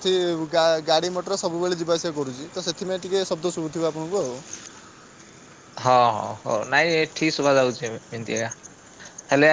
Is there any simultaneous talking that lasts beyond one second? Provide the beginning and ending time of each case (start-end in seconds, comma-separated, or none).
none